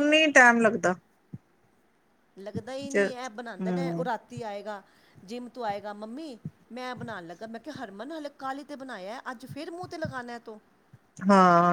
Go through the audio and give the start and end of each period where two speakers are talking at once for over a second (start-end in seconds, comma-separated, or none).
2.8-4.1